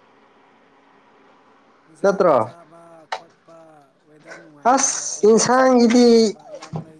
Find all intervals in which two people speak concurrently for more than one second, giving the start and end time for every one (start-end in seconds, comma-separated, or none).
4.6-6.3